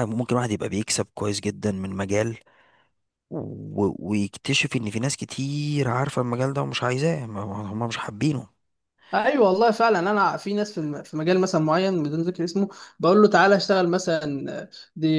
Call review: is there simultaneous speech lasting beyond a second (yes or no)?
no